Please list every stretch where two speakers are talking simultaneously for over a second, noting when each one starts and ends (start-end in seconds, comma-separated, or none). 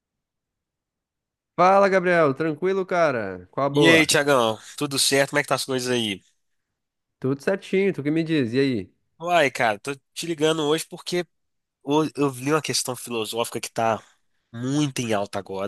none